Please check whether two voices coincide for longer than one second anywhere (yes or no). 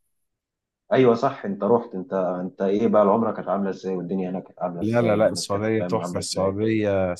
yes